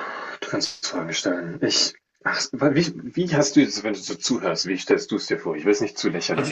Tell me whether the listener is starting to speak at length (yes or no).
yes